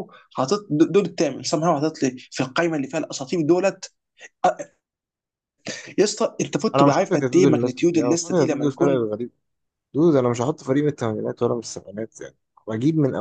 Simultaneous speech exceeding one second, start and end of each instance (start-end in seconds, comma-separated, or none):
6.7-9.1